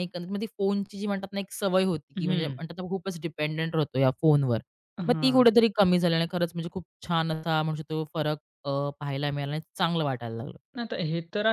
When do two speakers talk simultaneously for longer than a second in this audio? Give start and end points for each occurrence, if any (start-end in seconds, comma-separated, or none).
none